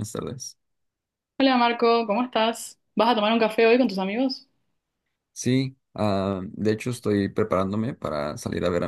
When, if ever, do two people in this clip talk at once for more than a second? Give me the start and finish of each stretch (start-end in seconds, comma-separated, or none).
none